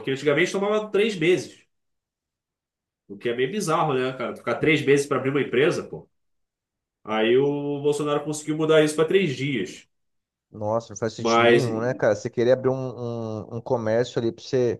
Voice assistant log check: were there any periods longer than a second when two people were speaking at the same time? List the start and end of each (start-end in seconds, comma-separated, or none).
none